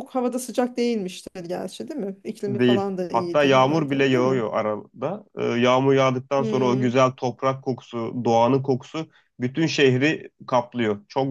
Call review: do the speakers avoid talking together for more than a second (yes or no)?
no